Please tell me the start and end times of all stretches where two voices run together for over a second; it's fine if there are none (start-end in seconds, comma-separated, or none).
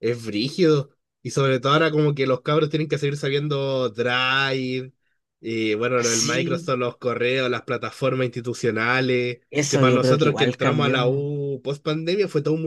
9.5-11.3